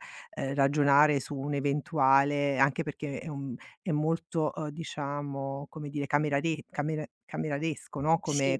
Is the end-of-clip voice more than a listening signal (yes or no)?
no